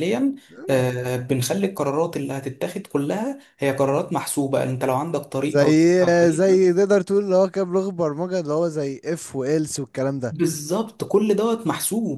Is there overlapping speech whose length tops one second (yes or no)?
no